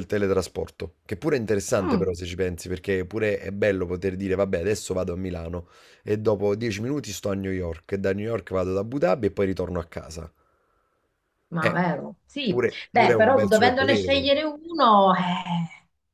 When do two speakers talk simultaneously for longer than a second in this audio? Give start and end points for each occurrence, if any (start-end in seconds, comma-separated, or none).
12.5-14.3